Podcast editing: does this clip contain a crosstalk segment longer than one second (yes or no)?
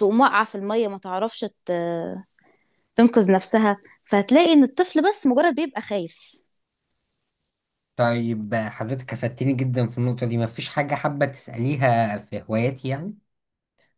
no